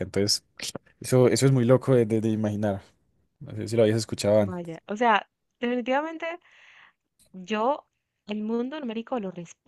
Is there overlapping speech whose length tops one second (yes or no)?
no